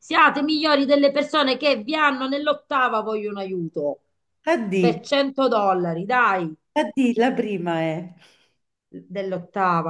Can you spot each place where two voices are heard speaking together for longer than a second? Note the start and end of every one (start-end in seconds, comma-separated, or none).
none